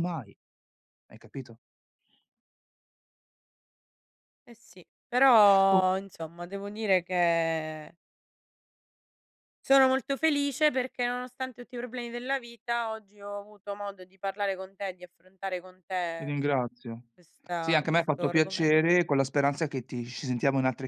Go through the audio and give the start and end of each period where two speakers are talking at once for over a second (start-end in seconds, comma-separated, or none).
17.6-18.8